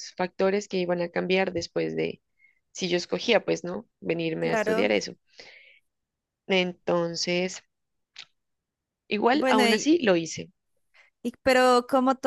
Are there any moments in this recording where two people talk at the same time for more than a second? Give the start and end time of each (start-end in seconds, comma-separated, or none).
none